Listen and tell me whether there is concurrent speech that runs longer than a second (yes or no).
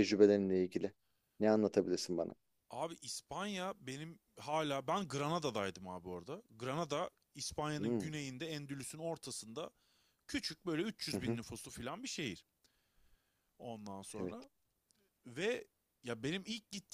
no